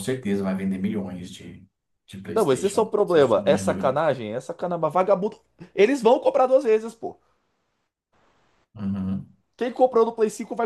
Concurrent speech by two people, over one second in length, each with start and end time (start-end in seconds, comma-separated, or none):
2.3-3.9